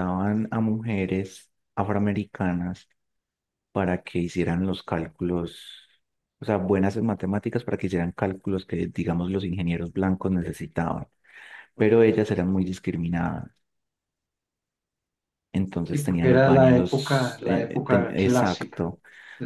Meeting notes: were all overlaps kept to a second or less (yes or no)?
no